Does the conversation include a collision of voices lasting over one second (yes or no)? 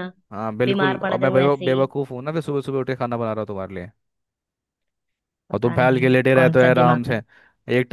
yes